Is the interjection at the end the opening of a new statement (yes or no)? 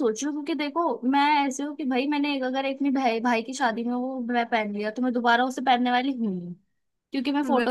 no